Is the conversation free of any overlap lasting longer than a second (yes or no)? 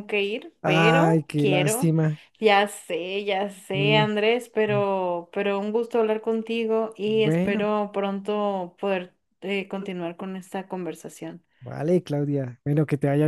no